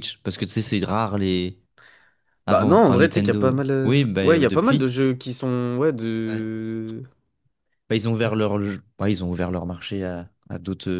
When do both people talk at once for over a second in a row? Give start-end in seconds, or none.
2.5-4.9